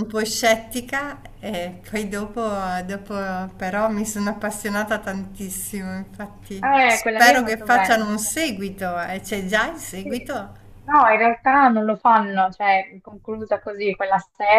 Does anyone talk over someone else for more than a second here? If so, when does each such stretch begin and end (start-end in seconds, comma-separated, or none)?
6.6-8.4